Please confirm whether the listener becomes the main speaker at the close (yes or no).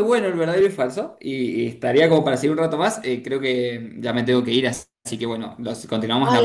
yes